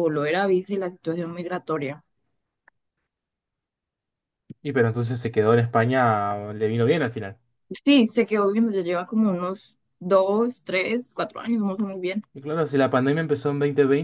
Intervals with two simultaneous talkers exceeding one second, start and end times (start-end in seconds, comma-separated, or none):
none